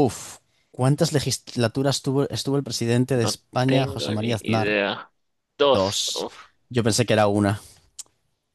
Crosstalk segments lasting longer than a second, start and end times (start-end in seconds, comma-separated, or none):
3.1-4.8